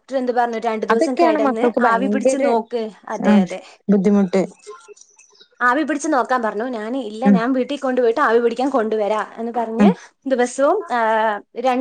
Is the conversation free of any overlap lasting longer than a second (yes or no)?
no